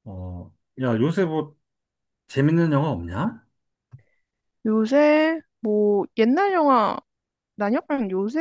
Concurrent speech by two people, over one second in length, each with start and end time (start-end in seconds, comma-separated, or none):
none